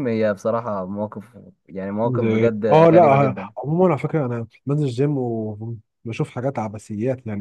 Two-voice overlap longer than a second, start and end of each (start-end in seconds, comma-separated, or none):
2.0-3.5